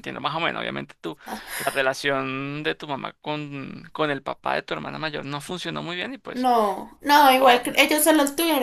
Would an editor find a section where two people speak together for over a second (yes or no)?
no